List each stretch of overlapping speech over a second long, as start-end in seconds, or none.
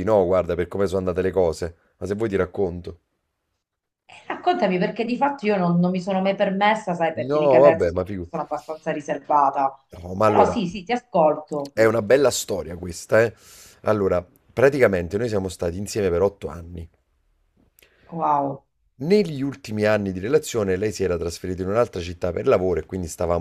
7.1-8.4